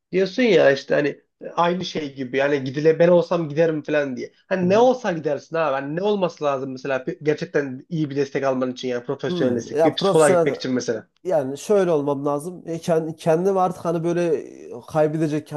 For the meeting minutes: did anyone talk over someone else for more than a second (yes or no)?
yes